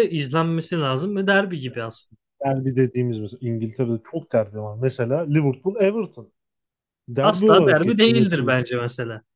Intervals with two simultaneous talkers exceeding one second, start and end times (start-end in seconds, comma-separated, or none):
7.2-8.5